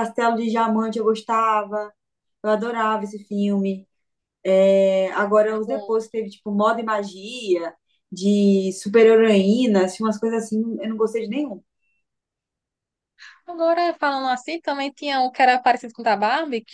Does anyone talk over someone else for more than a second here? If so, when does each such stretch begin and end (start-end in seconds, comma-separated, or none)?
none